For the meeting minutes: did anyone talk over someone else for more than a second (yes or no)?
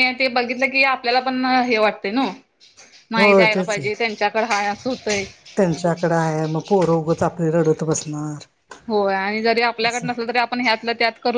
no